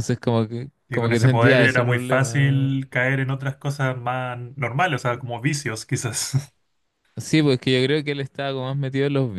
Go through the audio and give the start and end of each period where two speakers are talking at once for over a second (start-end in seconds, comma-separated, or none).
0.9-2.7